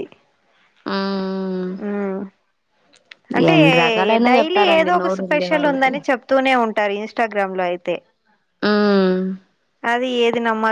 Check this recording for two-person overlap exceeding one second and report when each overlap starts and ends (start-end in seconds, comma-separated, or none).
4.3-5.9